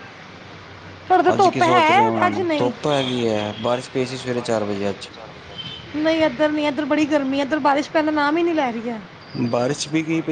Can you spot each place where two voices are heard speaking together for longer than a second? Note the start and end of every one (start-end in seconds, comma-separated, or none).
1.3-2.7